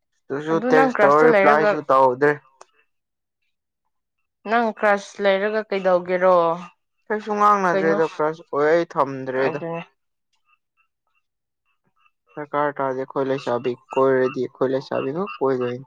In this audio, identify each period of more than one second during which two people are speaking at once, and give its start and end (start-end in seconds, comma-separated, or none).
0.5-1.8